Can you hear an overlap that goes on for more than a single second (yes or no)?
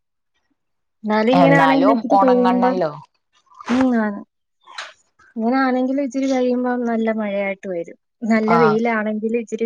yes